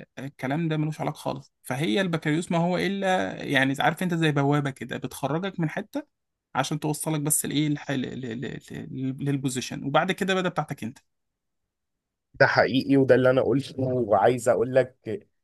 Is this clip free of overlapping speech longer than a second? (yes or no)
yes